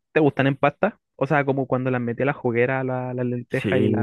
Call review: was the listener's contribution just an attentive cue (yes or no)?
no